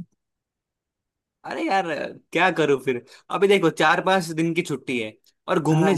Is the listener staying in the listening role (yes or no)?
yes